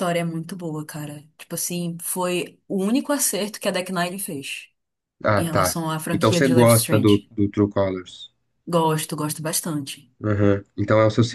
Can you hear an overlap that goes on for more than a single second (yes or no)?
yes